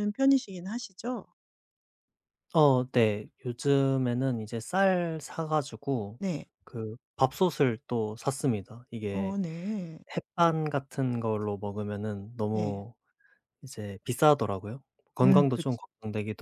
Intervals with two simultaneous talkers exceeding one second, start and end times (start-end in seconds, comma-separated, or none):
none